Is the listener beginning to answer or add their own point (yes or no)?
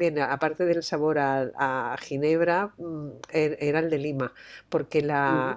no